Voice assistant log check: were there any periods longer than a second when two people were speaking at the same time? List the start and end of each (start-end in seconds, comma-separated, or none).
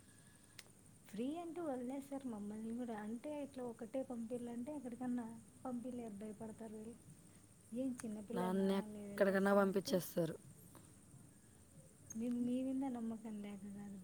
8.6-9.9